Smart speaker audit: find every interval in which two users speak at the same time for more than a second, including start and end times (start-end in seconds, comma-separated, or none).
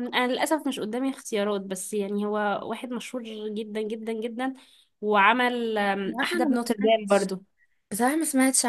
5.9-7.3